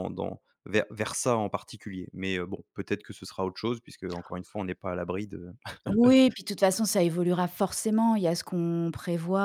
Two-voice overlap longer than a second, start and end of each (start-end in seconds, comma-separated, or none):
none